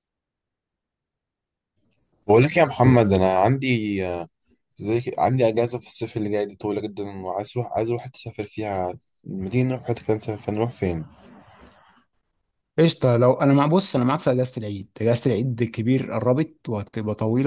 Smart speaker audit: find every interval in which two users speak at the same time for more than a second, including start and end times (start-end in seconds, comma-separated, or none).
none